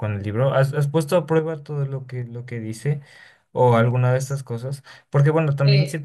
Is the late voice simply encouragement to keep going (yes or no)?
yes